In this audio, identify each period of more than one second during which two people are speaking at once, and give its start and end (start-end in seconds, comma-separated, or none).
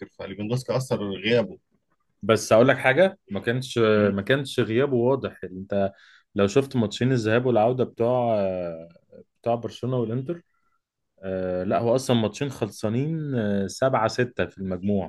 none